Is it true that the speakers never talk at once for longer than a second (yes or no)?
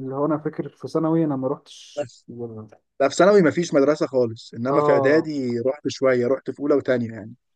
yes